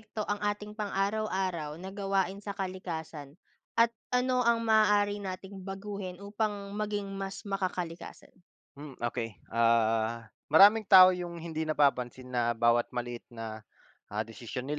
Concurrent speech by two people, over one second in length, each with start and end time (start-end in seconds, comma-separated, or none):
none